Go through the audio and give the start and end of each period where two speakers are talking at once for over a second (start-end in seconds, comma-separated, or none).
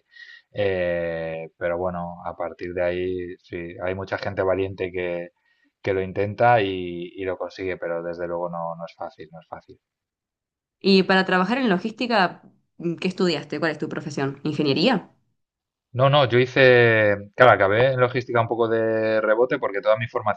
none